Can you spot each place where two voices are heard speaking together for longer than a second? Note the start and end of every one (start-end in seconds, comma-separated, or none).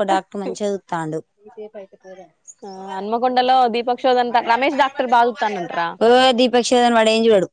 none